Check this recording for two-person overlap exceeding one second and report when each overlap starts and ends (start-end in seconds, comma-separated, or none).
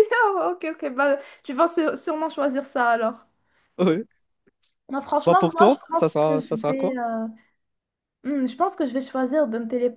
5.2-7.0